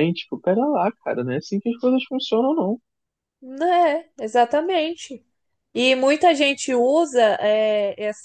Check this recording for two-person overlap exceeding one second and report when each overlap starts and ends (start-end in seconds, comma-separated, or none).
none